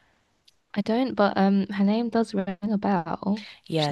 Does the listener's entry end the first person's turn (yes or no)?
yes